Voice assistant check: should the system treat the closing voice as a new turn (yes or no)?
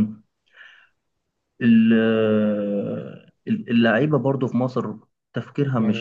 yes